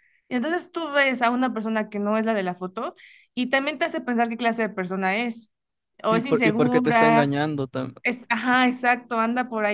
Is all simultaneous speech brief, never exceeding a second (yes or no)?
no